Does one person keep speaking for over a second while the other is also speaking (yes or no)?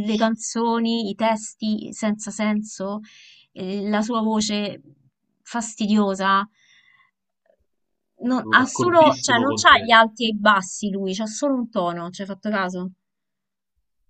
yes